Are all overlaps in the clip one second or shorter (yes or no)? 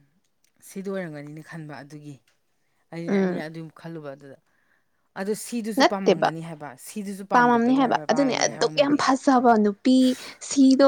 no